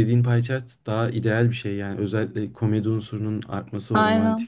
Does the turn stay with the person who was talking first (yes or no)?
yes